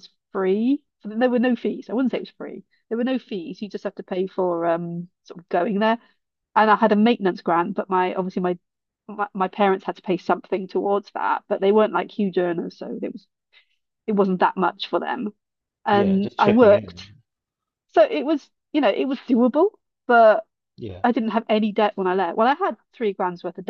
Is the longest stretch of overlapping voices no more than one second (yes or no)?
no